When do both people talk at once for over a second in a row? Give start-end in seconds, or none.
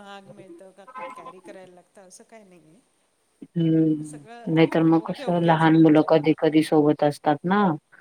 4.1-6.1